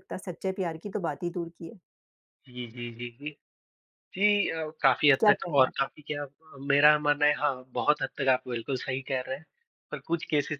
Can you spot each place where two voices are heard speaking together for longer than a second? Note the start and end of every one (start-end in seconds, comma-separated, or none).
none